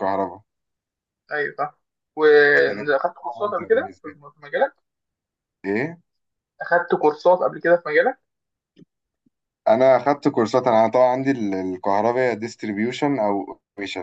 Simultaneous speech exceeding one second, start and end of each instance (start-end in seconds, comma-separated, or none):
2.5-4.2